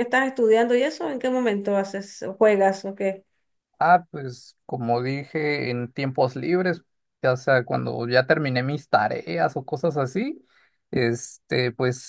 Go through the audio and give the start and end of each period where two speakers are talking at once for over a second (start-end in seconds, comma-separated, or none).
none